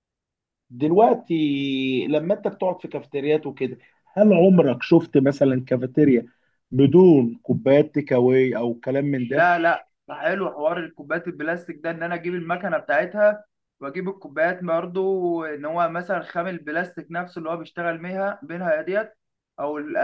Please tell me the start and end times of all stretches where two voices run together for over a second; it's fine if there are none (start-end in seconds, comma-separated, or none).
none